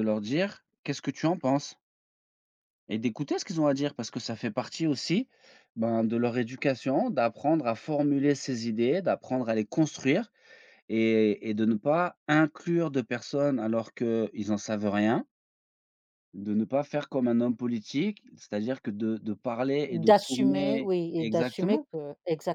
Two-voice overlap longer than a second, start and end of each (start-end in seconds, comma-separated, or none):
20.0-21.9